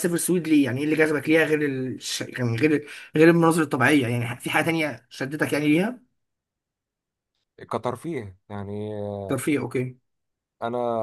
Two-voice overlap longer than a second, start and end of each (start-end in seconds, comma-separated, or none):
none